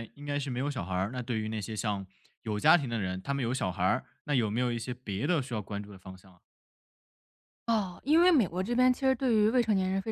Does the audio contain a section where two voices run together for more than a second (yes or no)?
no